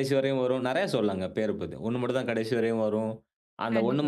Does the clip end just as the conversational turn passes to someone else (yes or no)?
no